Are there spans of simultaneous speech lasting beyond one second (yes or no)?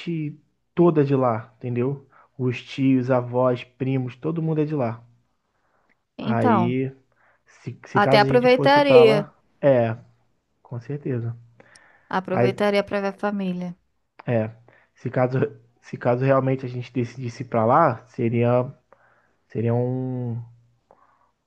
yes